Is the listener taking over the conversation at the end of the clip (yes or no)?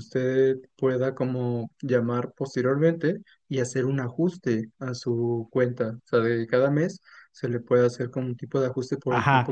yes